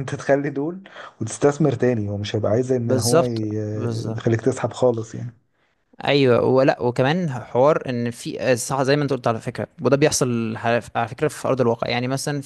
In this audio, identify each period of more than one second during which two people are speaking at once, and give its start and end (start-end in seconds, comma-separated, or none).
2.8-4.2